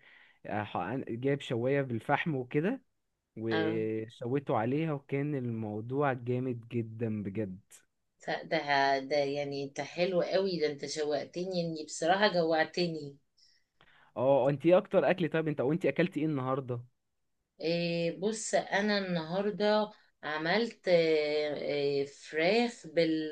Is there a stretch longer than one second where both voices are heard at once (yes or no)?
no